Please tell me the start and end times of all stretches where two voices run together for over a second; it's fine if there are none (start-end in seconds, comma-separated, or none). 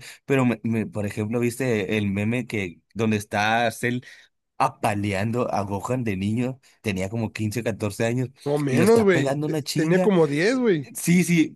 8.7-10.1